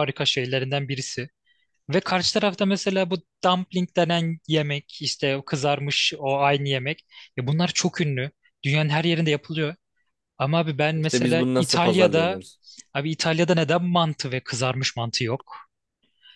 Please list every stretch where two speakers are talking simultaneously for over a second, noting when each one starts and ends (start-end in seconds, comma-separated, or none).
10.9-12.4